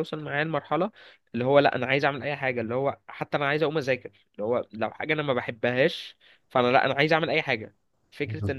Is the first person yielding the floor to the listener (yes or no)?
no